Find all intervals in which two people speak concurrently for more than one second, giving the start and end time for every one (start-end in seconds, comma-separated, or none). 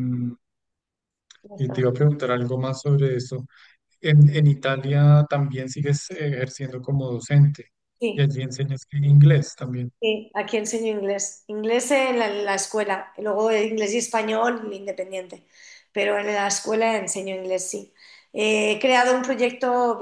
none